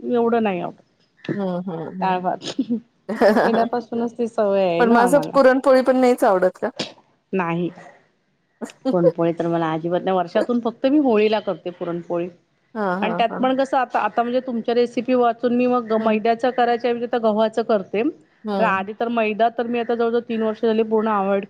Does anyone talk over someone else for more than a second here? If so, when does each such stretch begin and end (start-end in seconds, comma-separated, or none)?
none